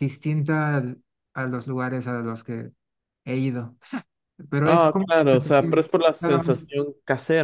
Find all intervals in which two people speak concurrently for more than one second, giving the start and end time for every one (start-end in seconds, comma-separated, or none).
4.6-6.6